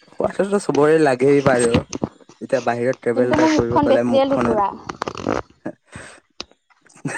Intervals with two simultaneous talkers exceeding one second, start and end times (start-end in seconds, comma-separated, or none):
3.1-4.7